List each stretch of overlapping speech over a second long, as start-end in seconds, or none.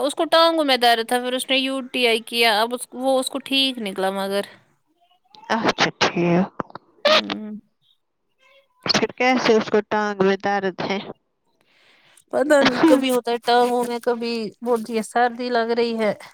none